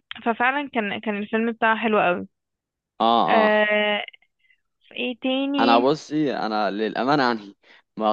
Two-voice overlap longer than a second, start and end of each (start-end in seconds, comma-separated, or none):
none